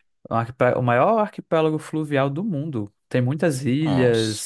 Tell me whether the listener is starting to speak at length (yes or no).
no